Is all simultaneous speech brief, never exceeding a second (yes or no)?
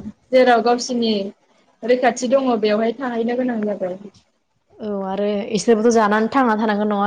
yes